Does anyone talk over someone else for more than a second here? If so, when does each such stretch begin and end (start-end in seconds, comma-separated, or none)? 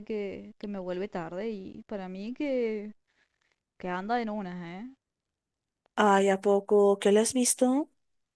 none